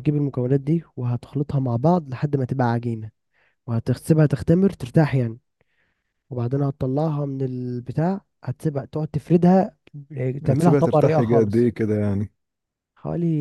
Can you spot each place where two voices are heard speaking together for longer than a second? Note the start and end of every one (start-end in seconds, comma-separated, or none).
10.5-11.7